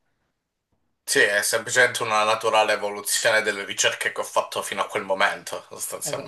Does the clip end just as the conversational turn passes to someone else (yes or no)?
yes